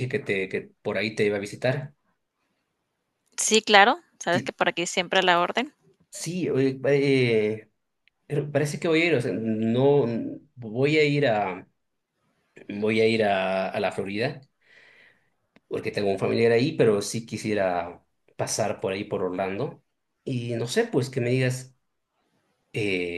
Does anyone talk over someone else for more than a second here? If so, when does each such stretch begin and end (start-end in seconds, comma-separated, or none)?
none